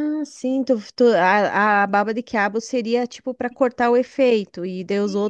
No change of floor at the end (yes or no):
no